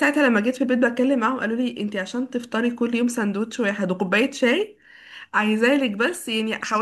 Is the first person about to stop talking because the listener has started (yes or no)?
no